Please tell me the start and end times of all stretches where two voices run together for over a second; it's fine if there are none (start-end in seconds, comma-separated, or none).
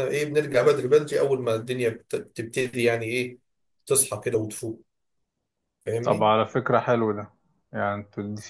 none